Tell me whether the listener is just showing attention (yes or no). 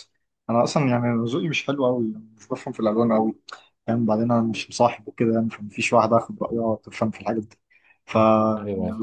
yes